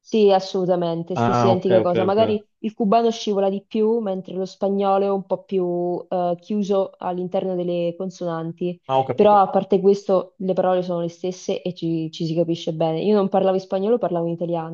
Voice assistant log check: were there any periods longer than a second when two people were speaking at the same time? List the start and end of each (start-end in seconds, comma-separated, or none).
1.1-2.4